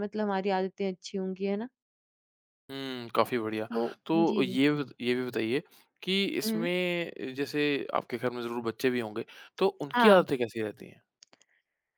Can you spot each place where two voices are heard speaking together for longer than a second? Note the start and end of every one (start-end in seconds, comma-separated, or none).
none